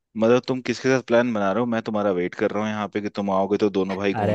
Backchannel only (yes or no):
no